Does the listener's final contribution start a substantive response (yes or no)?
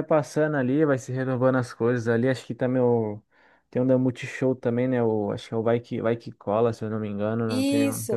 yes